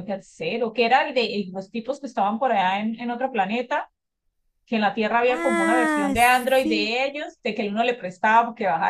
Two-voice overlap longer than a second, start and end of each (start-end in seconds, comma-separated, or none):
5.2-6.9